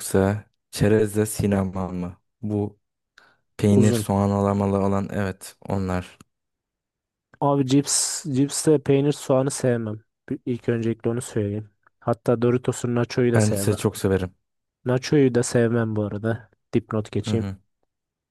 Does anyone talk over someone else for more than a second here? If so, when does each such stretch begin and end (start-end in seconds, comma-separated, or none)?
none